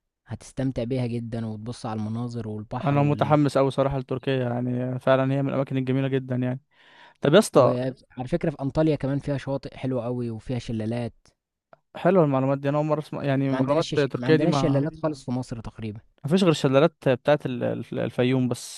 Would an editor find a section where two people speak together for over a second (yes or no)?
yes